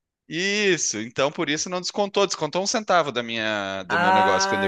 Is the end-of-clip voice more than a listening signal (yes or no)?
yes